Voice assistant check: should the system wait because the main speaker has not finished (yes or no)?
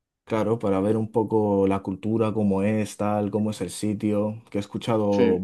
yes